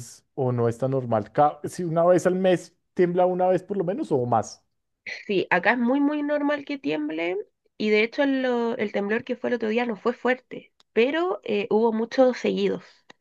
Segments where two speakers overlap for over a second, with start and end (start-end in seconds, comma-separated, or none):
none